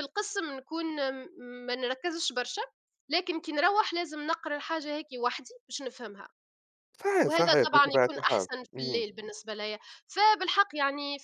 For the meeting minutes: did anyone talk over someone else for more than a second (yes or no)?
yes